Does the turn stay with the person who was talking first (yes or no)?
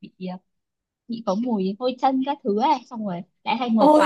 yes